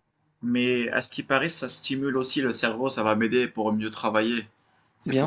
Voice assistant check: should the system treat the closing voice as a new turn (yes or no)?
yes